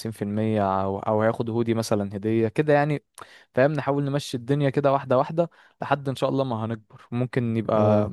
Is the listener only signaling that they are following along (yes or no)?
yes